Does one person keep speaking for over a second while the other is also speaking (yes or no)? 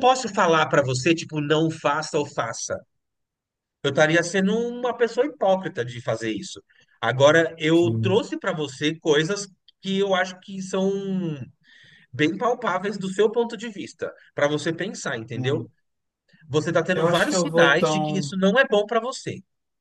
yes